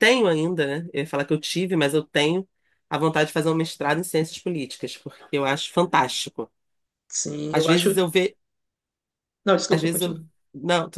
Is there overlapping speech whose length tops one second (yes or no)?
no